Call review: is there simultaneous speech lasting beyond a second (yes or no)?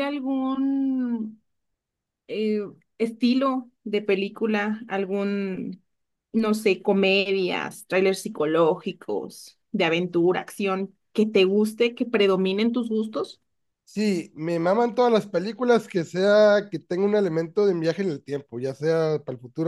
no